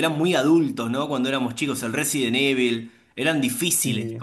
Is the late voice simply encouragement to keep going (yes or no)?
yes